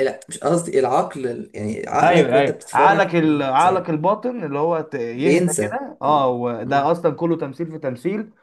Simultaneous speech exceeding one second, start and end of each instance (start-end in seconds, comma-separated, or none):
2.0-4.0, 5.2-6.9